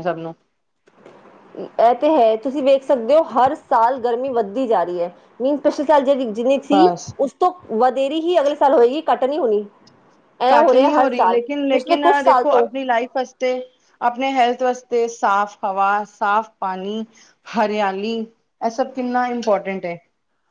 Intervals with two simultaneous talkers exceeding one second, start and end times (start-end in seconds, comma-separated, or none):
10.5-12.7